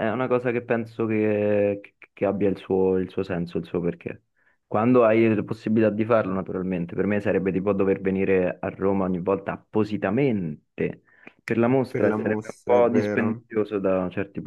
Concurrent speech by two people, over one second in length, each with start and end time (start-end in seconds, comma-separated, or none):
11.9-13.4